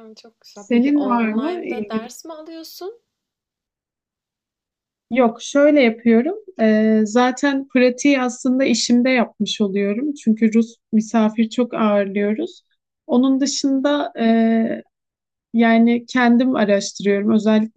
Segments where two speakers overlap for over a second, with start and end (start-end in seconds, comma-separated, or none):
0.5-2.1